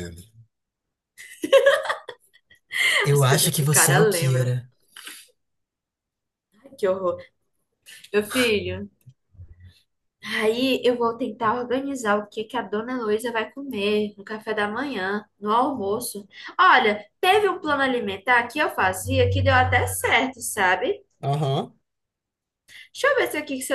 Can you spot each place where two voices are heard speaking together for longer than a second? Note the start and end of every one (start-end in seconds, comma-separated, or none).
3.1-4.5